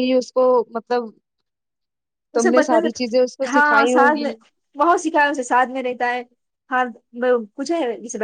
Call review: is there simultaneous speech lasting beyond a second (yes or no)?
yes